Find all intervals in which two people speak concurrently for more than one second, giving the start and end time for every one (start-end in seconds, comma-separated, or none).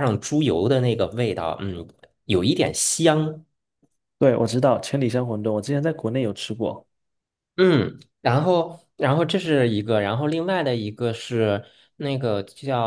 none